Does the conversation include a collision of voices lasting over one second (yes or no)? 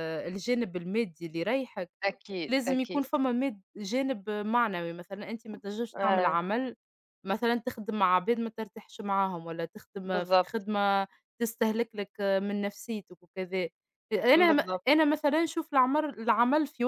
no